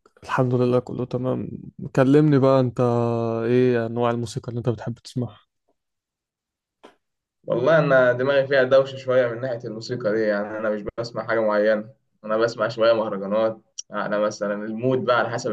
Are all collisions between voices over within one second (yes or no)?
yes